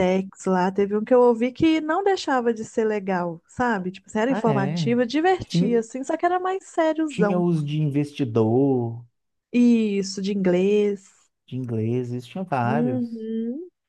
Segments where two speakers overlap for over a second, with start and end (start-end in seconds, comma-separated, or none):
none